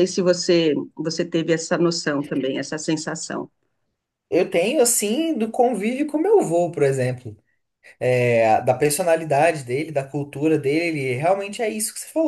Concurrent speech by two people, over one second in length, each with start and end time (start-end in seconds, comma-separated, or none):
none